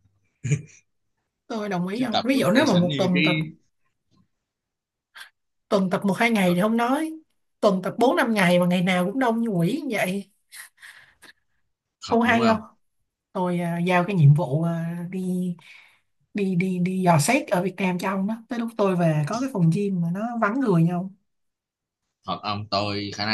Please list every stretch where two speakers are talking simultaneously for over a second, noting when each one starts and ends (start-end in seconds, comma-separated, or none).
1.9-3.2